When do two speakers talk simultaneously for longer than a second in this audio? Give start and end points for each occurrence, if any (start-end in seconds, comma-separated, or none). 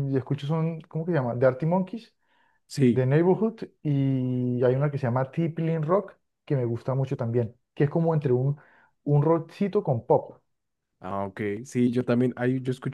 none